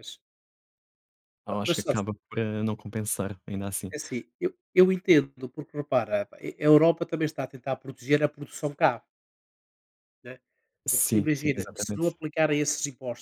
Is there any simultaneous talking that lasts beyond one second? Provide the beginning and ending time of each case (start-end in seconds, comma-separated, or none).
10.9-12.2